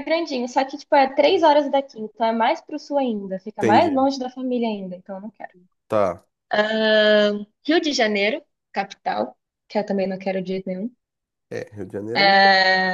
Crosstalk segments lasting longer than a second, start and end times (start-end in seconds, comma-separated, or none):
none